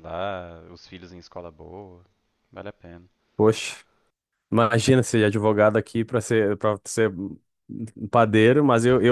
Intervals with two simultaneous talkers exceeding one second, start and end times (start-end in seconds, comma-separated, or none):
none